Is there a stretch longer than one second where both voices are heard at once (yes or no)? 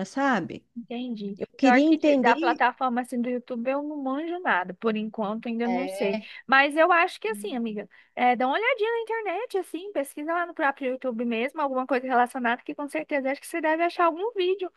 yes